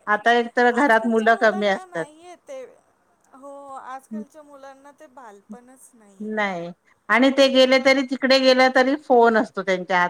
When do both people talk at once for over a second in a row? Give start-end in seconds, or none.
0.8-2.1